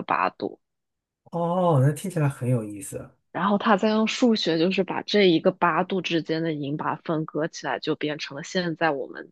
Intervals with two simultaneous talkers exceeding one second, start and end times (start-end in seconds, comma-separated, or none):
none